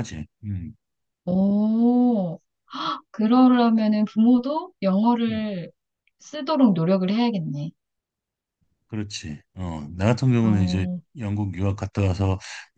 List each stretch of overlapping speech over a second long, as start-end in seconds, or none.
none